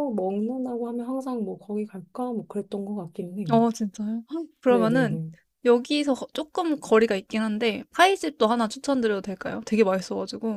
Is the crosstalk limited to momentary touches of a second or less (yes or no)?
yes